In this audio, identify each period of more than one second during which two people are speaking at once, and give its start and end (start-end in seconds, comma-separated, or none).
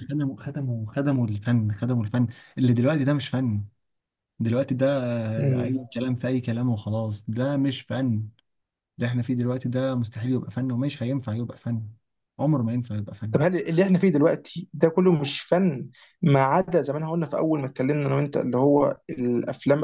none